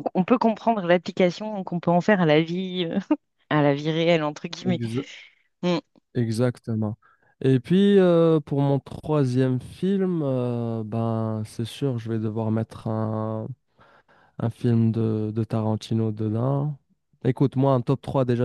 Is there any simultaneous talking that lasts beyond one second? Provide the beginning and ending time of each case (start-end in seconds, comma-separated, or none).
none